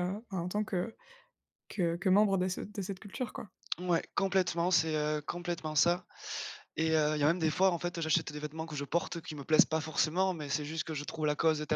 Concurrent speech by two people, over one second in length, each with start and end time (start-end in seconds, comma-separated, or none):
none